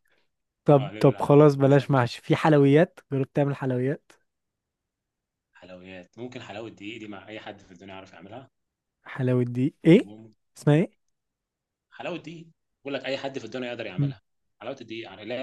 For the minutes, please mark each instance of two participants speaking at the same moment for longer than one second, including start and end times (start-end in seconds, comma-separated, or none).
0.8-2.1